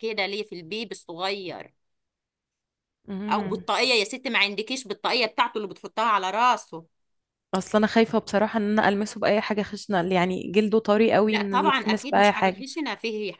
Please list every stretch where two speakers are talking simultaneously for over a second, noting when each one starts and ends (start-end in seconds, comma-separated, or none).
11.3-12.6